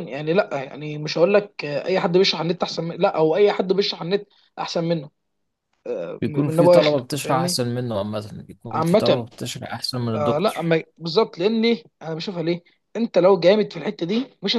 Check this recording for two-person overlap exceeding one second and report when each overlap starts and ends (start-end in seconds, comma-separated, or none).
6.2-7.6